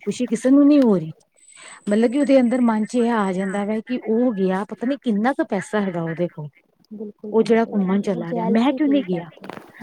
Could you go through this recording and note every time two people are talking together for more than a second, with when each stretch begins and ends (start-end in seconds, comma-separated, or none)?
7.3-9.3